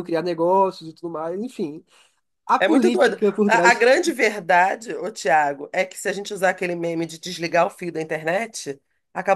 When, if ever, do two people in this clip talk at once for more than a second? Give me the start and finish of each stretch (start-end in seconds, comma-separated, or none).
2.6-3.9